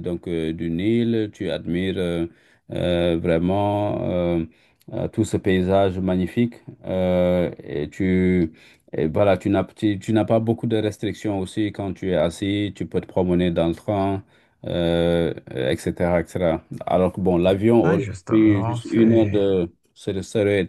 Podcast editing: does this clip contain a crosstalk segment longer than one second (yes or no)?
yes